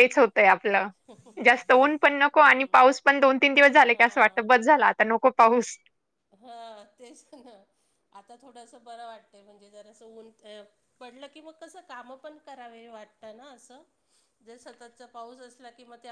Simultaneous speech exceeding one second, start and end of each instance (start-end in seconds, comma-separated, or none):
none